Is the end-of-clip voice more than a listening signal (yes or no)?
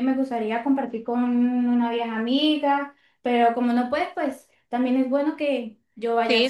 yes